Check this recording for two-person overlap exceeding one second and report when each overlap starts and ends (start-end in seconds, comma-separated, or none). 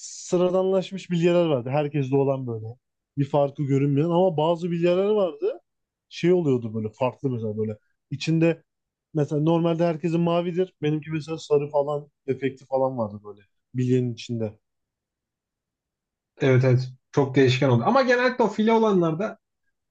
none